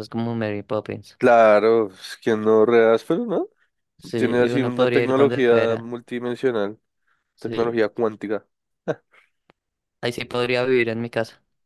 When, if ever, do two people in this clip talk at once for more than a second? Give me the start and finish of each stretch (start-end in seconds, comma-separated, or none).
4.2-5.9